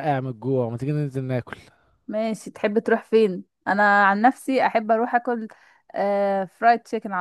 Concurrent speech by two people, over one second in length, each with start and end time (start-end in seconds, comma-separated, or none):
none